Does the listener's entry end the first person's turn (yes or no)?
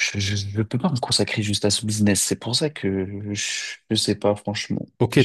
yes